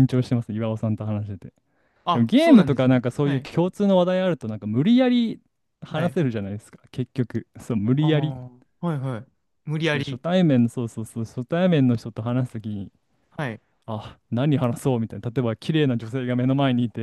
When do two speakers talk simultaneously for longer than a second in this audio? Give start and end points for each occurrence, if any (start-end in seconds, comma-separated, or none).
2.1-3.5